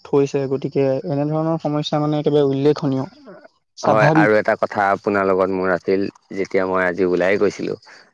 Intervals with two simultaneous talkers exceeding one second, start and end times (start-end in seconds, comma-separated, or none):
none